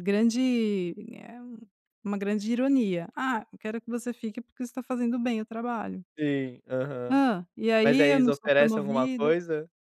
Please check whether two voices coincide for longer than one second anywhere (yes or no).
yes